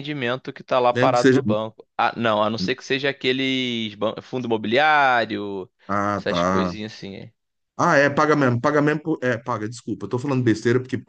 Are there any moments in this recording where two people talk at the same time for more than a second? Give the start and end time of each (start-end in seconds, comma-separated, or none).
none